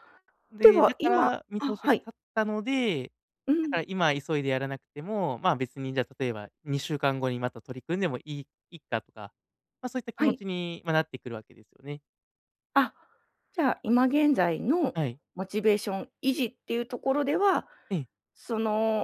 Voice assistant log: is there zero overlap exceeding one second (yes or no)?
no